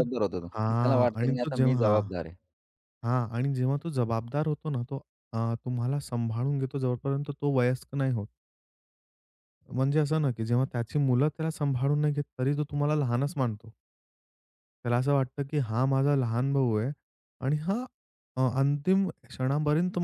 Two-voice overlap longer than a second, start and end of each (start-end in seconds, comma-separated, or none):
0.5-2.1